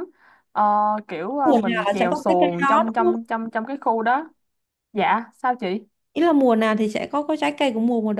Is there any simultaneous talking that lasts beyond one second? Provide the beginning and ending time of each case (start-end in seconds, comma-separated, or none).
1.4-3.2